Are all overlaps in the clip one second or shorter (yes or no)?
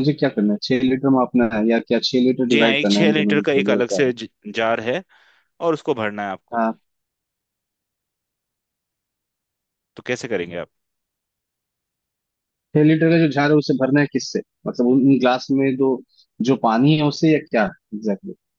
no